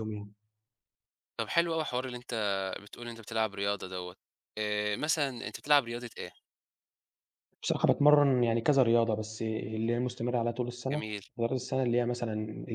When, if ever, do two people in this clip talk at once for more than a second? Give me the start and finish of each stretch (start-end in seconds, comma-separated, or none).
none